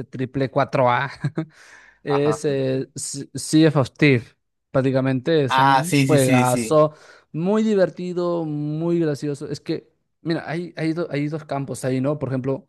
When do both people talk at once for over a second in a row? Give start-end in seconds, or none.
5.5-6.8